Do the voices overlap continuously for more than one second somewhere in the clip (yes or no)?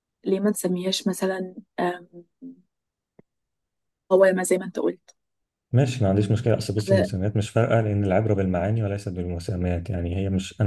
no